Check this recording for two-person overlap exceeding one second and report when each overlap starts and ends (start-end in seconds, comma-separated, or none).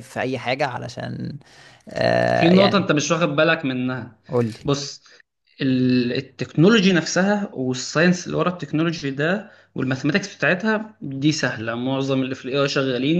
none